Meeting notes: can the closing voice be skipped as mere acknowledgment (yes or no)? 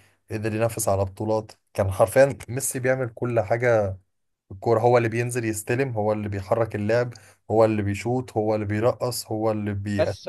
no